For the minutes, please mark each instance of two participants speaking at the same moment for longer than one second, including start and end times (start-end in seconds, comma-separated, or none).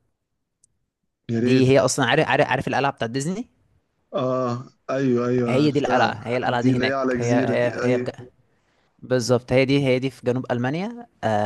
5.5-8.1